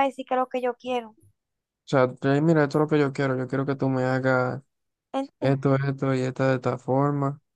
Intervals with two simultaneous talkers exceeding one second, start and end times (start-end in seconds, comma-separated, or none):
none